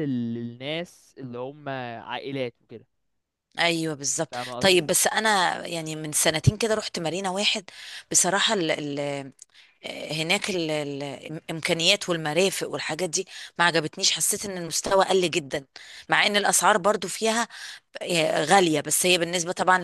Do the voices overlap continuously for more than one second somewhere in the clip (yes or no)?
no